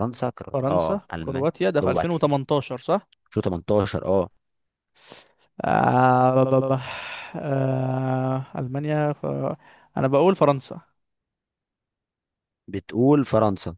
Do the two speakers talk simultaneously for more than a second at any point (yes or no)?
yes